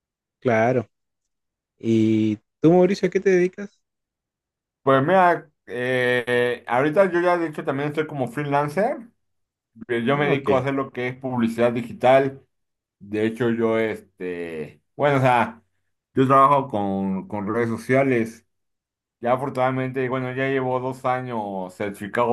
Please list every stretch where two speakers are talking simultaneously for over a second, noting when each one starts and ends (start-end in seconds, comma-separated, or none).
none